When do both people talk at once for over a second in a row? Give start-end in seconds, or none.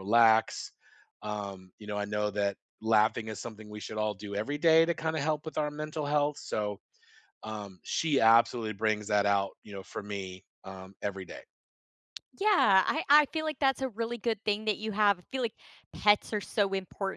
none